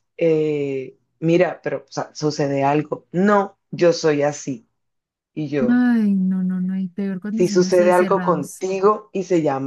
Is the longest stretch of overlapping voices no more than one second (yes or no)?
no